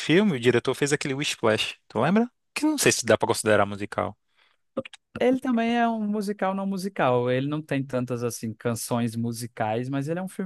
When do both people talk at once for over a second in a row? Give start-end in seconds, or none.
none